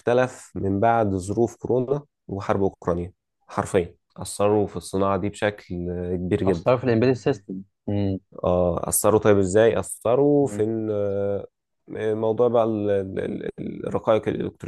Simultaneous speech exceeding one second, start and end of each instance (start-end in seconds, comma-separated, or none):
none